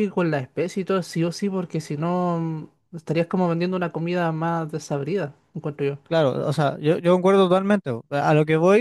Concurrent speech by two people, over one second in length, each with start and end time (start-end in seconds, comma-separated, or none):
none